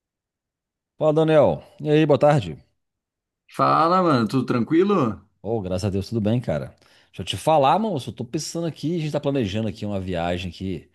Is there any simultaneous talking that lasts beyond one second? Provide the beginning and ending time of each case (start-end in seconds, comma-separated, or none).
none